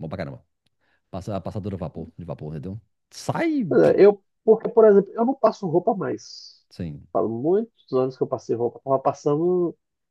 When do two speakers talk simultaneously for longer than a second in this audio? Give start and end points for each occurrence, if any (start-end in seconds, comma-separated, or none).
none